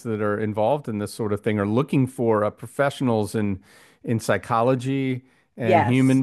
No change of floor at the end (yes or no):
yes